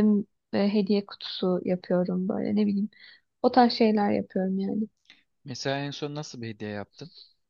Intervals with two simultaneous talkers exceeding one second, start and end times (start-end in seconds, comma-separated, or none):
none